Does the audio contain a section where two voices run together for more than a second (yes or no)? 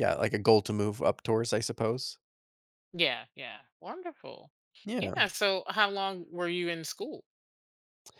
no